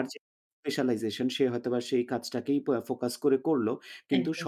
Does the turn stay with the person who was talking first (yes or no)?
yes